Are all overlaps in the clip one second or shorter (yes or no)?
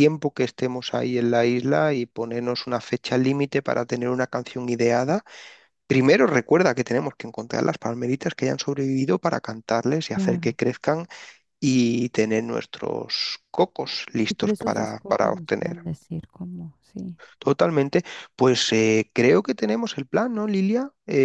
no